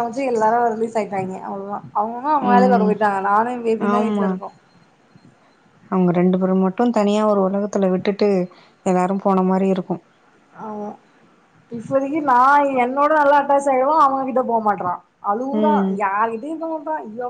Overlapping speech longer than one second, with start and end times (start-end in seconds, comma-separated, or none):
none